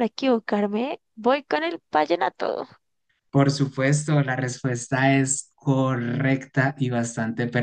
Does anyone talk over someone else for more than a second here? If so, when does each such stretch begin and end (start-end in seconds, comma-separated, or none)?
none